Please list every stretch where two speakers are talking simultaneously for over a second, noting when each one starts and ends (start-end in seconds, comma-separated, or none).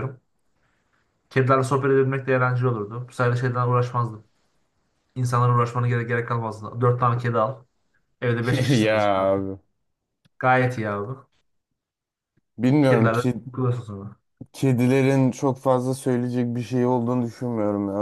none